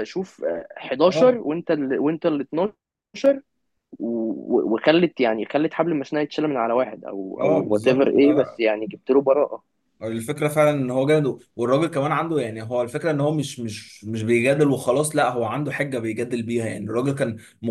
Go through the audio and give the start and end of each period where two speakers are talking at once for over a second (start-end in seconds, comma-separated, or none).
7.4-8.6